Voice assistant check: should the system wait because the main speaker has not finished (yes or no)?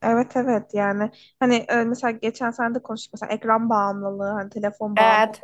yes